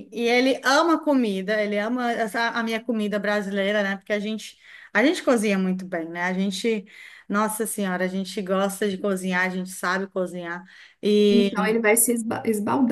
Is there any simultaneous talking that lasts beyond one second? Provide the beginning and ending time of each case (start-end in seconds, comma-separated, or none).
none